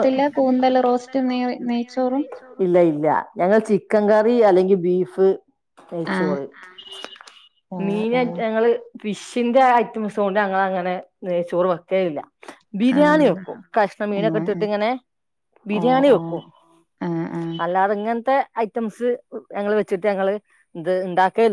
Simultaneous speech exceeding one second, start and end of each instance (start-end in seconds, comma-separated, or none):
none